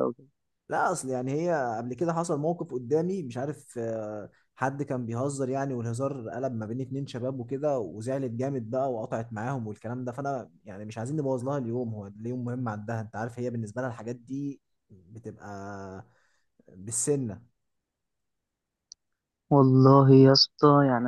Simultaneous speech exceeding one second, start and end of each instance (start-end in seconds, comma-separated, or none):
none